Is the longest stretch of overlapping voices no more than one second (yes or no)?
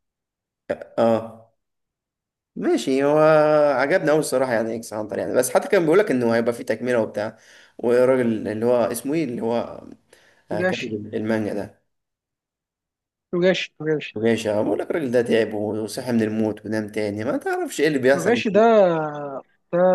yes